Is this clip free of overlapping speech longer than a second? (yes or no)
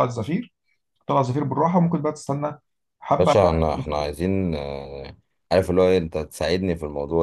yes